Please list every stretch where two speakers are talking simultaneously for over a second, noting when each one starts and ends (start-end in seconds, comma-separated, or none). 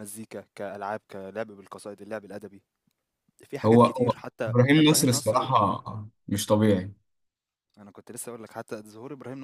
3.6-5.5